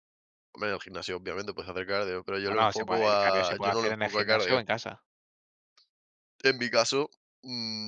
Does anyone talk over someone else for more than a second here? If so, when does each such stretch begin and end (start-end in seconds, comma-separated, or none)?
2.4-4.6